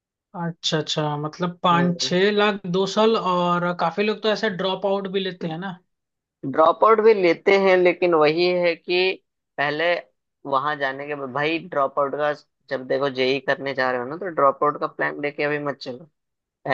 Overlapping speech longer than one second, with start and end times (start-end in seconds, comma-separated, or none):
none